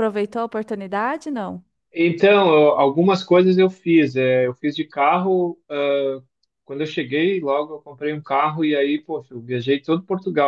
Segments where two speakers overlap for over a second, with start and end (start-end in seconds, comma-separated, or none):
none